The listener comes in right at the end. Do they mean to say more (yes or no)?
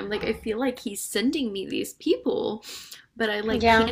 no